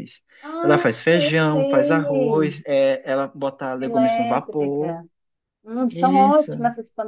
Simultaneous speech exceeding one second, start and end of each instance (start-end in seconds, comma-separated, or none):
0.6-2.6, 3.8-5.0